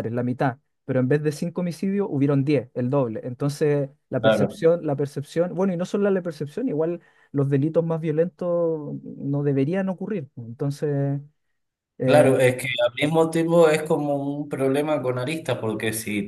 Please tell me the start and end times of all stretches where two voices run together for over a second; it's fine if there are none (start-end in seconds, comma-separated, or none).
none